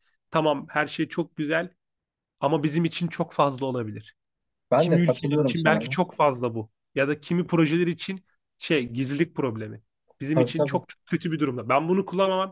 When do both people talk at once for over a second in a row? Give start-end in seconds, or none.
4.8-6.0